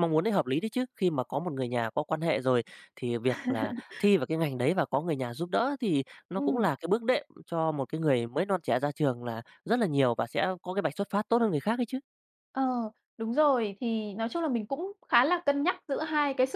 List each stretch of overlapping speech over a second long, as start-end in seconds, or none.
none